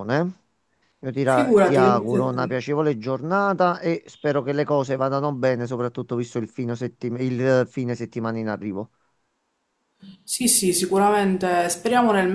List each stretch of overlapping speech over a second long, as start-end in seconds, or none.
1.2-2.6